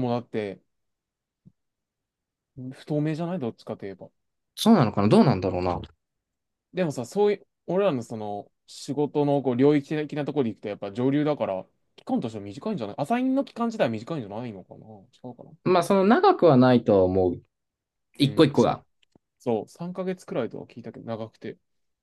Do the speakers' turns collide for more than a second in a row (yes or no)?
no